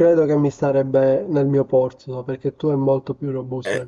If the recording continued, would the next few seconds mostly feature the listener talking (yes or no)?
yes